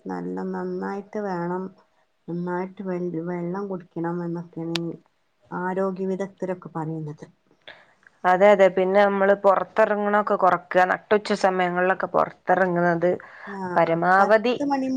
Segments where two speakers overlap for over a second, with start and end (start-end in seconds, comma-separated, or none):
none